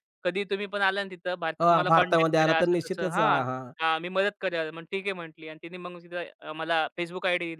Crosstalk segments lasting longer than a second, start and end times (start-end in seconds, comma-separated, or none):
1.6-3.4